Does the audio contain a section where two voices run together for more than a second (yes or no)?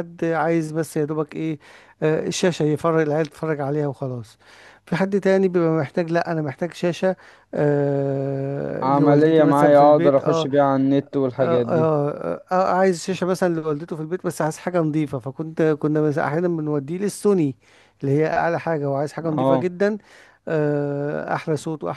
yes